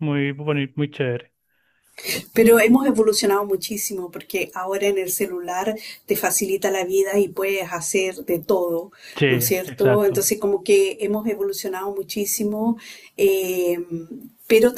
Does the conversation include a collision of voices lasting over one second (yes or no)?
no